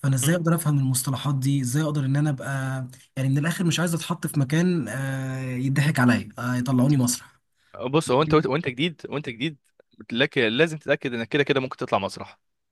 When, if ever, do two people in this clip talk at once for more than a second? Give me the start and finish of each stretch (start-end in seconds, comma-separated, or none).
none